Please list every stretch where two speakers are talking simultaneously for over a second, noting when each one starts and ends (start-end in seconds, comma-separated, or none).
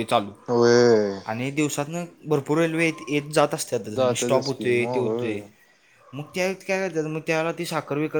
4.0-5.4